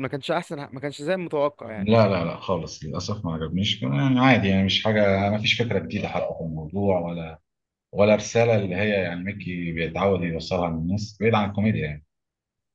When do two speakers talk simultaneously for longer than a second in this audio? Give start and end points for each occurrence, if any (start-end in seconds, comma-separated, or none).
none